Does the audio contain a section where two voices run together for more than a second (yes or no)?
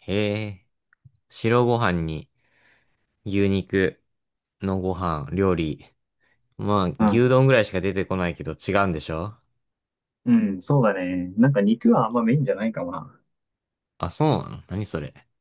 no